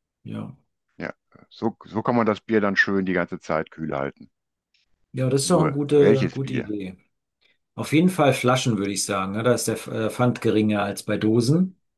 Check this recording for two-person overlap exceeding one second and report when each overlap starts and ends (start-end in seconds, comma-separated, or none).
5.4-6.7